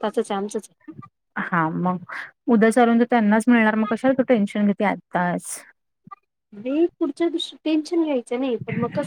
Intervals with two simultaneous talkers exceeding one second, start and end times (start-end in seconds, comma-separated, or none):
none